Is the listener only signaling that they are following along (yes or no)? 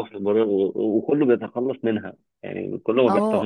no